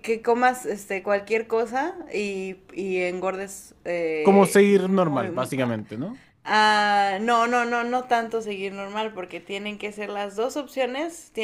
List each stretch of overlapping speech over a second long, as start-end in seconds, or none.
4.2-5.5